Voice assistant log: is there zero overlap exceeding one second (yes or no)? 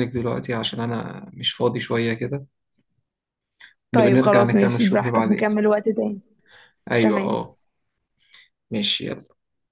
no